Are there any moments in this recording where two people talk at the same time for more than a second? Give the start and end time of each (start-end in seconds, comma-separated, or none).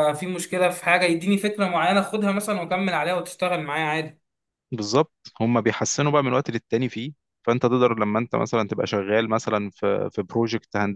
none